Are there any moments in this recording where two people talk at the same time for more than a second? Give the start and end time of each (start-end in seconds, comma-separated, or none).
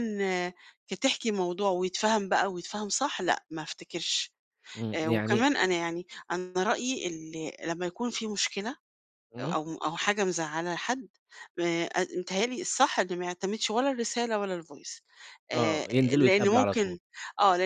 15.5-17.0